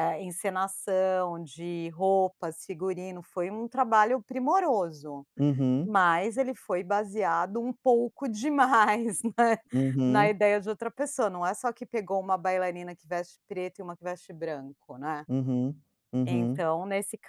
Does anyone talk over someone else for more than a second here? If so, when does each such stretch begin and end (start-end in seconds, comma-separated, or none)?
none